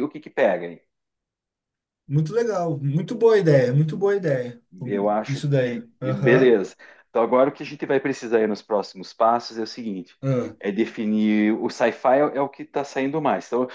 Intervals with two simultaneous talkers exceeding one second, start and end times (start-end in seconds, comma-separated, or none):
4.8-6.6